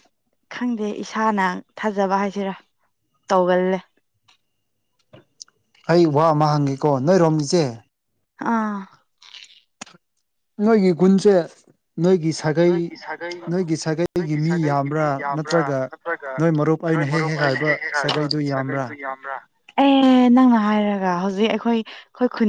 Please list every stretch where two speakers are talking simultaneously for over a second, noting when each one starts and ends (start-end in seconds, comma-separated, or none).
16.9-18.9